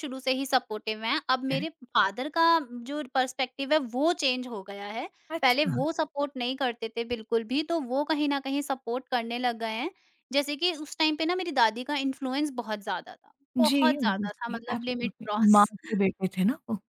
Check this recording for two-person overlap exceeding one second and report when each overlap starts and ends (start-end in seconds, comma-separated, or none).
13.6-15.7